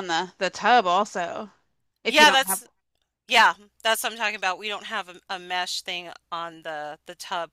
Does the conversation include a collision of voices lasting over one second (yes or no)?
no